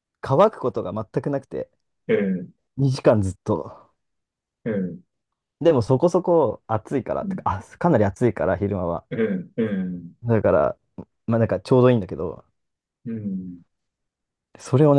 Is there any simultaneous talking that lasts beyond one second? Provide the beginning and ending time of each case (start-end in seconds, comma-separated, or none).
none